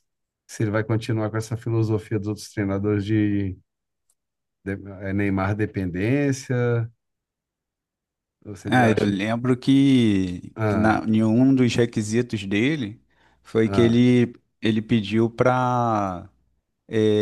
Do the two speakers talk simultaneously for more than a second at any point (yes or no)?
no